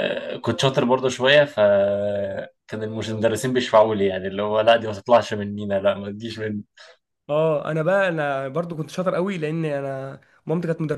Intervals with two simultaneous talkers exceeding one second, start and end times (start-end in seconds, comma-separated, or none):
none